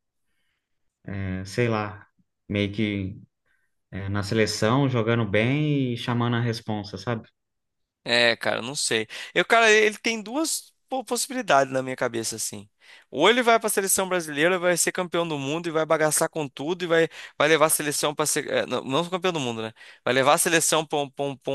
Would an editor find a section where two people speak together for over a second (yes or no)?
no